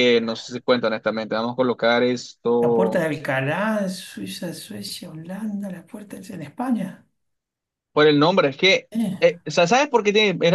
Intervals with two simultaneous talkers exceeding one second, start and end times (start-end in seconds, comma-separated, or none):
none